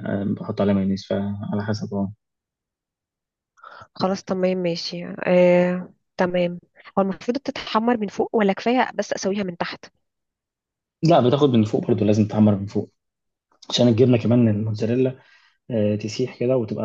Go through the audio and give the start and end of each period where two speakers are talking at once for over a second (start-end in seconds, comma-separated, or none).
none